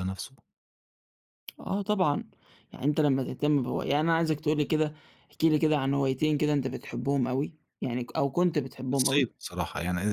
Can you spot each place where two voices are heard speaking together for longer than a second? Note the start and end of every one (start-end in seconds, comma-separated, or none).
none